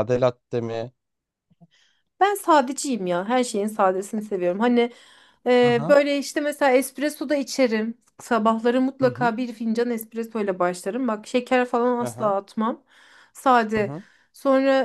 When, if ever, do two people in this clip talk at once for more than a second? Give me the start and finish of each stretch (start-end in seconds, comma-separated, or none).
none